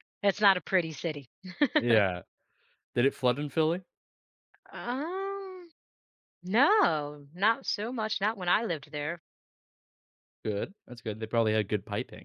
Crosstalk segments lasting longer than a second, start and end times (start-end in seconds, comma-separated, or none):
none